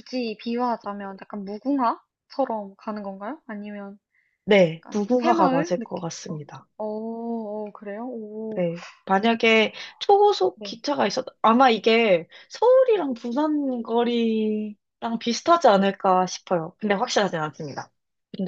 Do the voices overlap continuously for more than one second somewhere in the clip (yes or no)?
yes